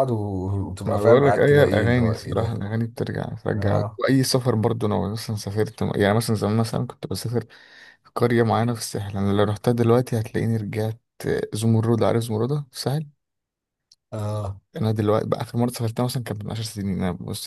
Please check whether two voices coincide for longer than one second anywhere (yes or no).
yes